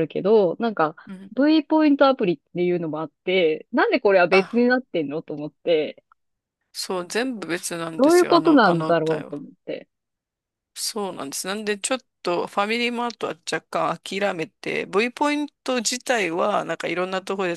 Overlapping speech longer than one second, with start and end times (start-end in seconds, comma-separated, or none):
8.0-9.3